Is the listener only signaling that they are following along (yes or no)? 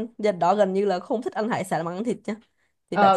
no